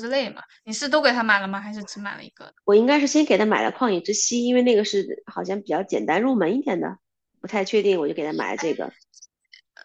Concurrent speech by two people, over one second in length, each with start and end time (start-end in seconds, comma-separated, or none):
none